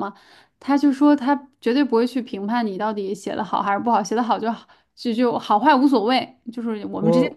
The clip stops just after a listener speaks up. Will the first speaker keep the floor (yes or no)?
yes